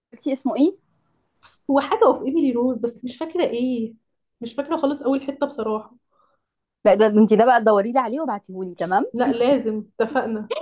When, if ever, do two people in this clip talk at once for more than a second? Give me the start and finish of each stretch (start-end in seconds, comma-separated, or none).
none